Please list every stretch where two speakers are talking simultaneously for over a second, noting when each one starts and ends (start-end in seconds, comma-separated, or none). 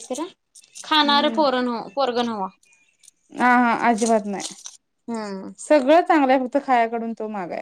none